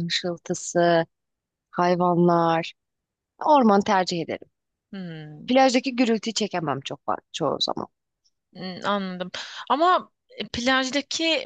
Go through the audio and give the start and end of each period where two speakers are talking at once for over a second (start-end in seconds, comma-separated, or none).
none